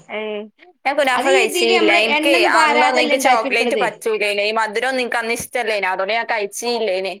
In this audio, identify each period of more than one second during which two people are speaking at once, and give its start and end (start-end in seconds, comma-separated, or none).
1.4-3.8